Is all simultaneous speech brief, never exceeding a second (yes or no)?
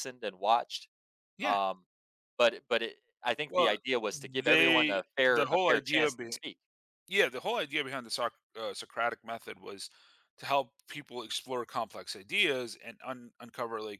no